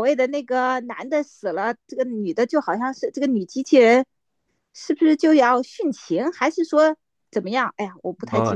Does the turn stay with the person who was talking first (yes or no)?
no